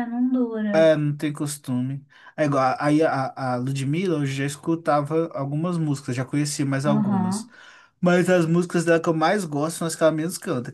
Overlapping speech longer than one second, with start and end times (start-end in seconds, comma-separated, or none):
none